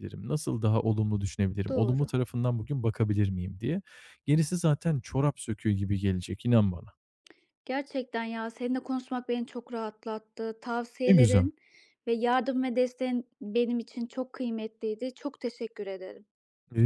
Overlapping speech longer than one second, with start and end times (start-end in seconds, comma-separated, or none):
none